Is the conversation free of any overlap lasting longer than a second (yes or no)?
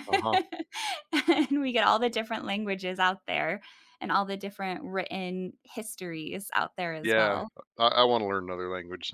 yes